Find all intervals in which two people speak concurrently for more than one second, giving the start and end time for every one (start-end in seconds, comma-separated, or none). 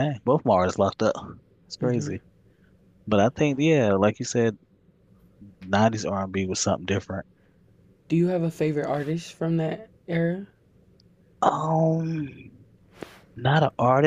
none